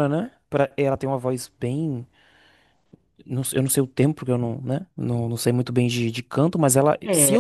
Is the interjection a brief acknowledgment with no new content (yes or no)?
no